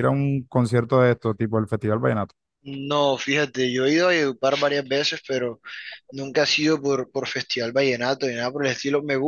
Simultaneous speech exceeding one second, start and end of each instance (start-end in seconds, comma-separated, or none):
none